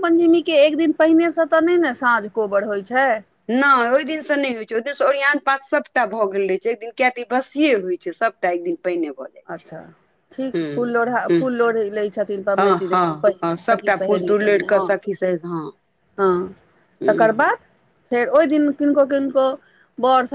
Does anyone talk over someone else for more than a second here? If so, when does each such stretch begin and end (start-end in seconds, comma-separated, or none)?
12.6-14.8